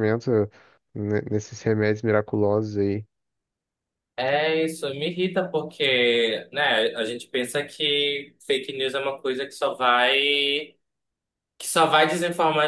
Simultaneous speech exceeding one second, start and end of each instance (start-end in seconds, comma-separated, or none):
none